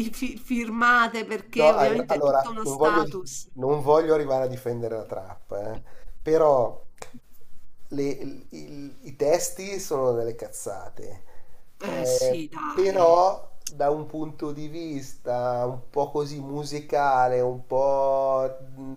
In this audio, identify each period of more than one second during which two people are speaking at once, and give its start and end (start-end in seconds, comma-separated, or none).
1.6-3.5, 11.8-13.2